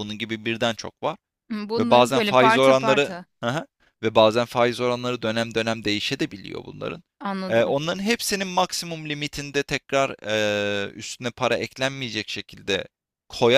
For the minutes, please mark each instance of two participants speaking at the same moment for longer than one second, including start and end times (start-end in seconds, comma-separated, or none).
1.8-3.2